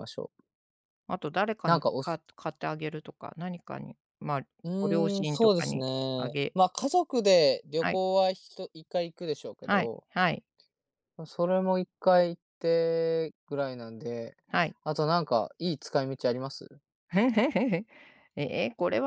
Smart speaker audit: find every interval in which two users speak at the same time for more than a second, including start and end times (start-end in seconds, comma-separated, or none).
4.8-6.6